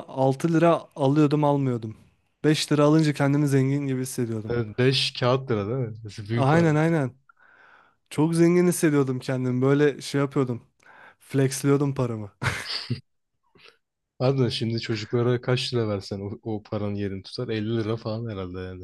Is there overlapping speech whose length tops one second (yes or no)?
no